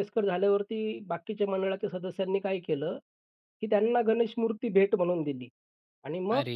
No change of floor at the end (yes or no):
yes